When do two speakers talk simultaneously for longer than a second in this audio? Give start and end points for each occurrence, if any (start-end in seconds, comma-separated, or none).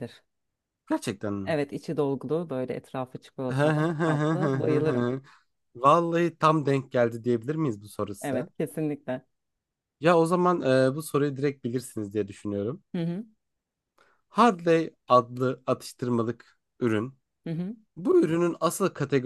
3.5-5.1